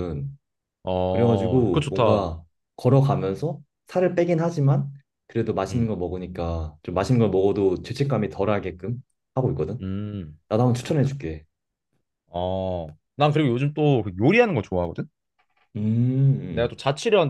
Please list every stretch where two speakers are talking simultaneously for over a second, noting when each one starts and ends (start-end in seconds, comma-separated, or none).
1.1-2.3